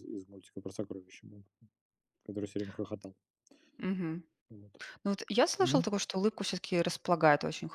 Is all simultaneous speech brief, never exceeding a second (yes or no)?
yes